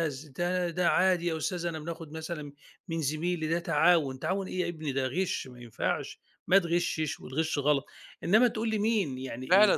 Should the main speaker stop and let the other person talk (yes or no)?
yes